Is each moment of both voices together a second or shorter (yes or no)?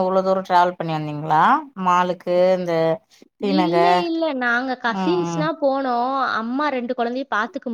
yes